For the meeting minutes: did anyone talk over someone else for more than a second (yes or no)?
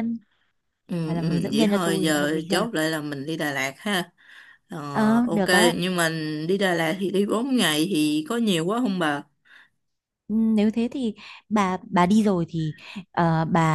yes